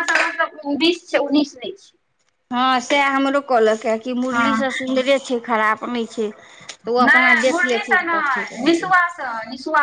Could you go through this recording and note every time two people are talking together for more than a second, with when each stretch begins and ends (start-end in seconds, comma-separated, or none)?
7.1-8.9